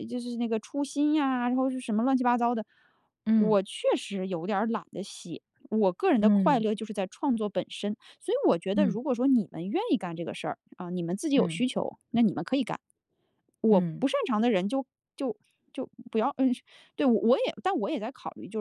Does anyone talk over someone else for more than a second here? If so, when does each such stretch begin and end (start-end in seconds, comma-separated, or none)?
none